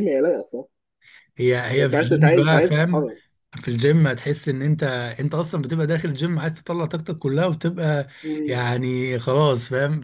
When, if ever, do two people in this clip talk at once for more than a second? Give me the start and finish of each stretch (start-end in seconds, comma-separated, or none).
1.7-3.1